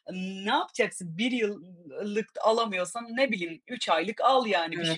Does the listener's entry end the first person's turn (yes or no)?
yes